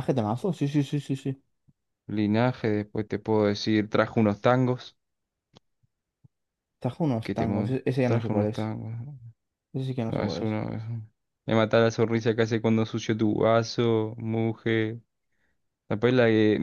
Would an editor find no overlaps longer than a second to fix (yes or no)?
no